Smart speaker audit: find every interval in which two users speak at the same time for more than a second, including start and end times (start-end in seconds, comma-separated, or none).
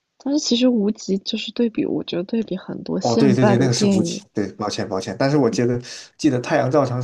3.0-4.2